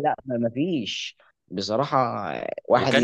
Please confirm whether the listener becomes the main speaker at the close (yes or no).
yes